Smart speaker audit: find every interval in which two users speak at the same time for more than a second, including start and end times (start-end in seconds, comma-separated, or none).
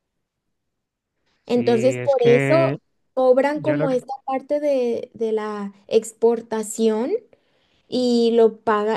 1.5-2.8